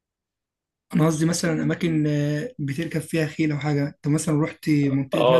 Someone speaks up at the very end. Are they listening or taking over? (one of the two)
taking over